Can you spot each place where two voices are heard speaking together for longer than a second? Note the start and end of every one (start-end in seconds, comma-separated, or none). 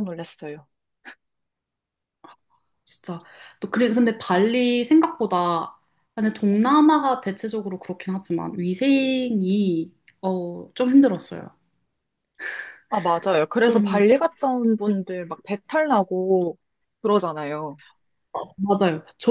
none